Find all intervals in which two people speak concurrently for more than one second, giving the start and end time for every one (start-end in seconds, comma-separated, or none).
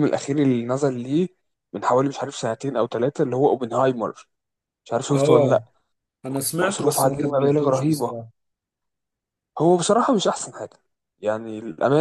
6.6-8.1